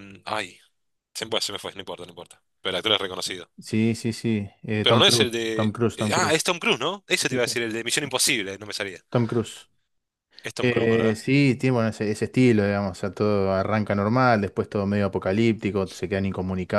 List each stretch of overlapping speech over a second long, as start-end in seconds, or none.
4.8-6.5